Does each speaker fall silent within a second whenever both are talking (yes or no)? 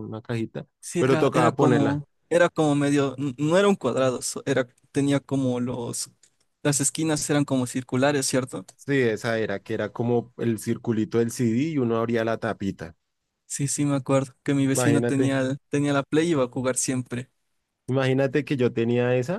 no